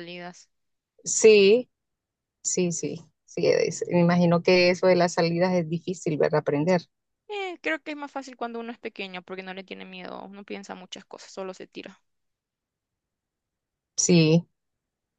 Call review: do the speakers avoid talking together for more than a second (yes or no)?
yes